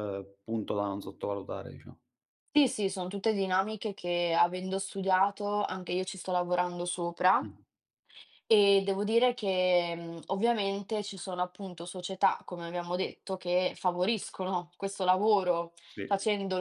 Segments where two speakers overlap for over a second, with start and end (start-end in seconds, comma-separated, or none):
none